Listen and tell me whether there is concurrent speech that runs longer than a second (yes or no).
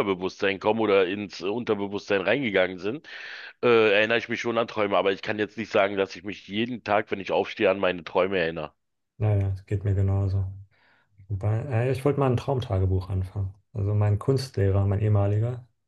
no